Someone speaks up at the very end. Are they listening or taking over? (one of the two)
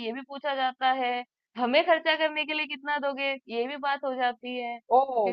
taking over